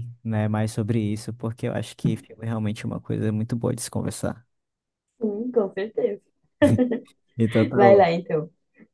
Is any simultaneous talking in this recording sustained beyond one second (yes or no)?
no